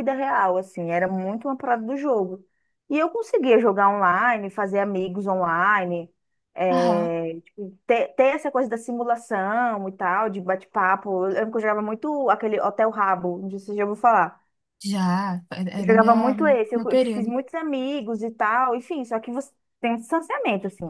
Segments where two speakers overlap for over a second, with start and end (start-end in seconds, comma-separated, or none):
15.8-17.3